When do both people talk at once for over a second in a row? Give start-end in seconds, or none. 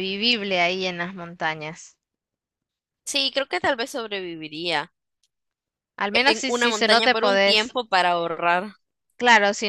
6.1-7.8